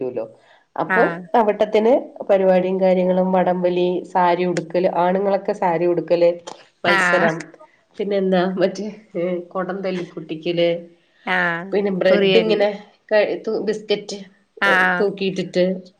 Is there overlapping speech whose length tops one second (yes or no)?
no